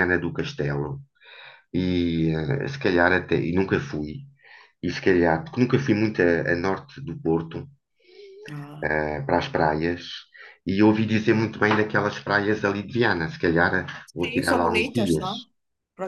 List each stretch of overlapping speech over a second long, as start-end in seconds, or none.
14.1-15.3